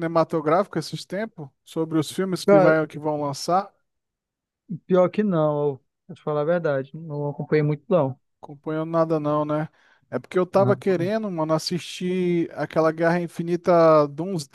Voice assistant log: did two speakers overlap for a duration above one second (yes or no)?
no